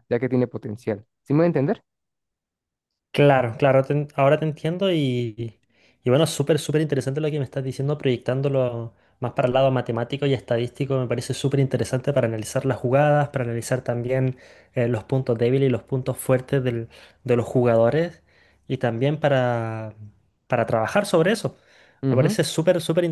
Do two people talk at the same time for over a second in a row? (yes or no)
no